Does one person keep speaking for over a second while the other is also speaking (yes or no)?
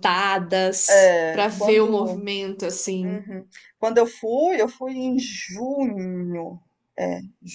yes